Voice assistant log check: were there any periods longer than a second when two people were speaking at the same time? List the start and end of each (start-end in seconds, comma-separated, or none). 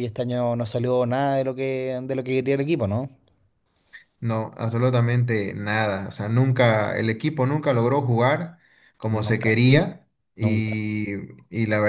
none